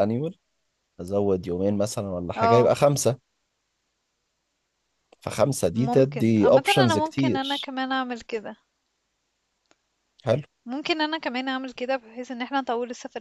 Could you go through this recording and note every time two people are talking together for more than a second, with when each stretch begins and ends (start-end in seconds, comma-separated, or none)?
5.8-7.7